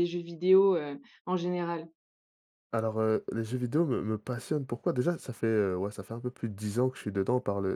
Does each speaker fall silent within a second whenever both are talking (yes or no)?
yes